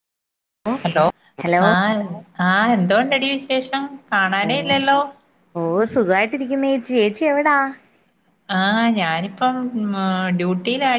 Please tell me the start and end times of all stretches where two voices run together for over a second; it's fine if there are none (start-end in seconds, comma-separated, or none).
none